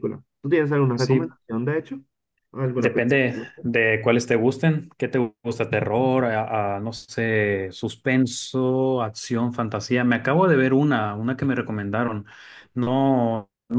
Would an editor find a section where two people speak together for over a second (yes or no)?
no